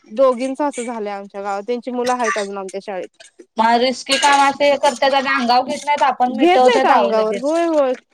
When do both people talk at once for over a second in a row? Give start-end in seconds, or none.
6.3-7.5